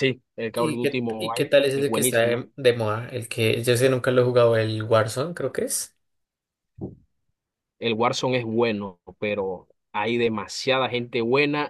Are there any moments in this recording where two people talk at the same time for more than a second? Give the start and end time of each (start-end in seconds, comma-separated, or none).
0.6-2.4